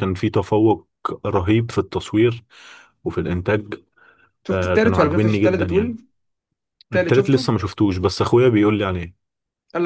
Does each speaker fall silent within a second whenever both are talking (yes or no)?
no